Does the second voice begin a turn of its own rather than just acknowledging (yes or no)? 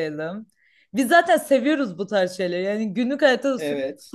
no